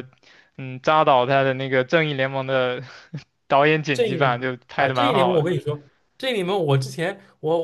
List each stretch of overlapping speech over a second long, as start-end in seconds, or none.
3.9-5.5